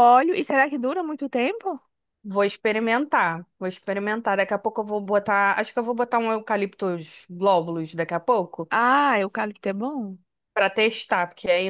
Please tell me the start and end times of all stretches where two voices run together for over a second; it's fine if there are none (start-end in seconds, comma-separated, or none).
none